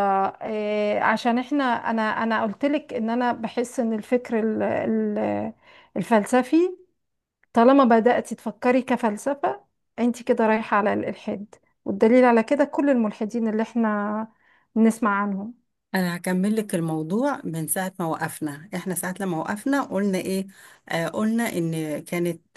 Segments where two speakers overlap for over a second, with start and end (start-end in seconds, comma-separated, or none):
none